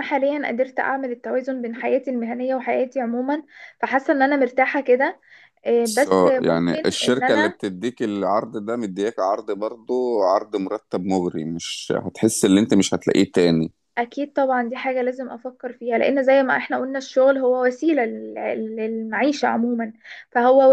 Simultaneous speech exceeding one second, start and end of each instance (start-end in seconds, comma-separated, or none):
5.8-7.6